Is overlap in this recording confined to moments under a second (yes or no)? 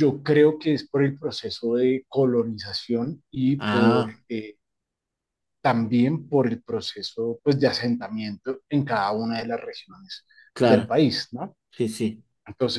yes